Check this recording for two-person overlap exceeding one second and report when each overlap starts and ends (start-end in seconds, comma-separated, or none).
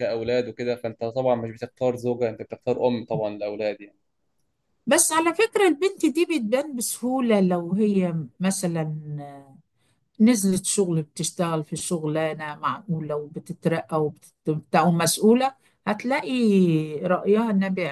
none